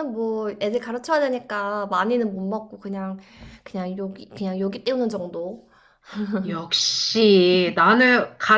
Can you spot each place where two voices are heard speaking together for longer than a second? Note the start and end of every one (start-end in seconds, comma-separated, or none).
none